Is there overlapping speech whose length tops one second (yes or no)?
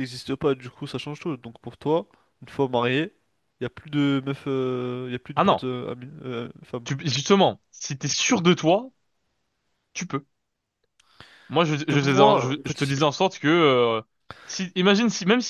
yes